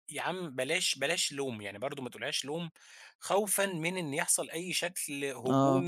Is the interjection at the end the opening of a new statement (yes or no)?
no